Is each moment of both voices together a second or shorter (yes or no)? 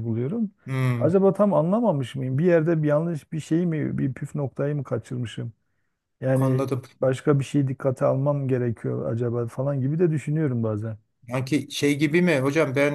yes